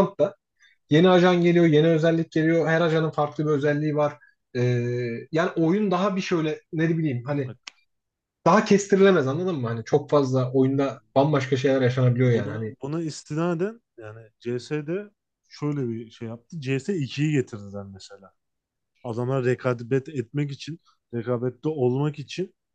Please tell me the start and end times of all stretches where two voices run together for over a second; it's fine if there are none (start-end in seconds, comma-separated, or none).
none